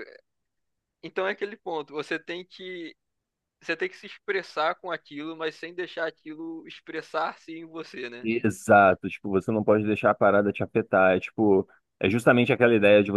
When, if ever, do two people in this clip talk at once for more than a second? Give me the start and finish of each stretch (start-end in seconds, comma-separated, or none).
none